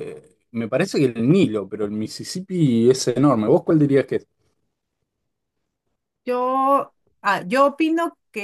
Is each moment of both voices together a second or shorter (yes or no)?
yes